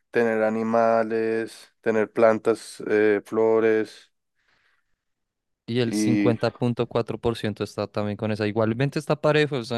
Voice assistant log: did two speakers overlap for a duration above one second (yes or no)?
no